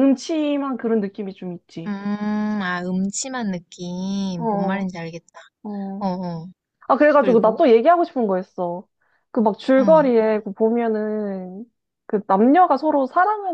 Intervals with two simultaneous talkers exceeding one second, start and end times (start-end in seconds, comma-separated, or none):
none